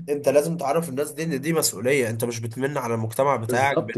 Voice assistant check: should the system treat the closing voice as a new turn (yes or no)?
yes